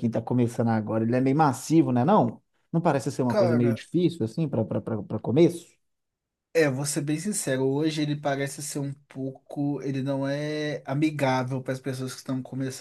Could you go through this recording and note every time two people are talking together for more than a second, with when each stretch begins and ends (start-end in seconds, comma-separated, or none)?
none